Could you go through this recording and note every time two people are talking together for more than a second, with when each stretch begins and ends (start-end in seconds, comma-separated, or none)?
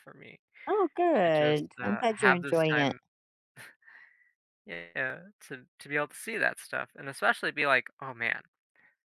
1.2-3.0